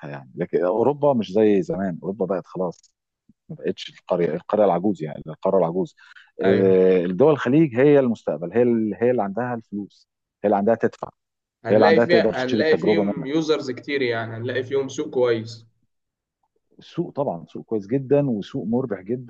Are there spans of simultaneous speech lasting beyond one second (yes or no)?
yes